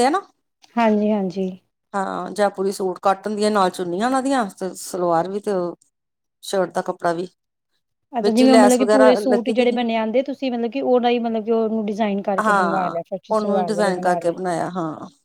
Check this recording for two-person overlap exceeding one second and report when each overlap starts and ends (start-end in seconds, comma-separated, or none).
8.2-9.8